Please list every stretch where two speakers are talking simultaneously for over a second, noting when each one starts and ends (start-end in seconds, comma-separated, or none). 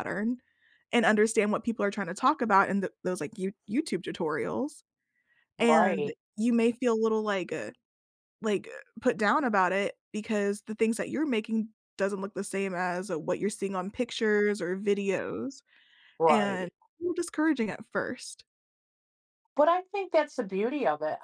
none